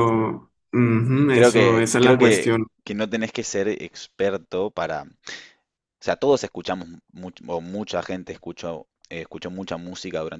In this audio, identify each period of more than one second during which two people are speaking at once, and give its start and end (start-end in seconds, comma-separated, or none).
1.3-2.7